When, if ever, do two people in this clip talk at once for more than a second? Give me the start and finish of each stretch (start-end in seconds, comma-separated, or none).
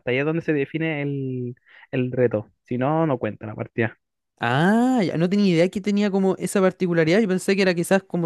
none